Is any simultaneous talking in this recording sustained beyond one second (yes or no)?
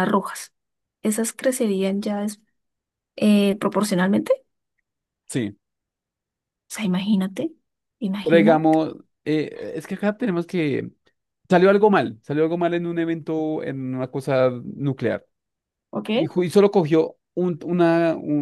no